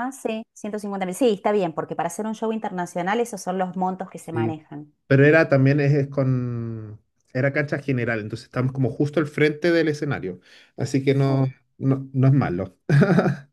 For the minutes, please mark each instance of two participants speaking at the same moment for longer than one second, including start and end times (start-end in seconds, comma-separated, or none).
none